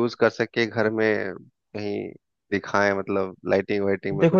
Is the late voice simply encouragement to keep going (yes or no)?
no